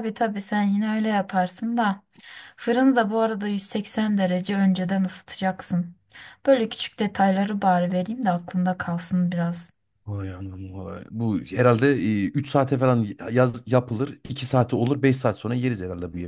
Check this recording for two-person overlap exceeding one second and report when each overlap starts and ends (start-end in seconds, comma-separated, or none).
none